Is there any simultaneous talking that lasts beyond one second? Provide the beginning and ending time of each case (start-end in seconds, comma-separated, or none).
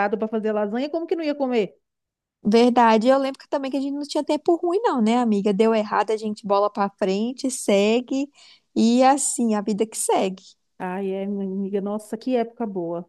none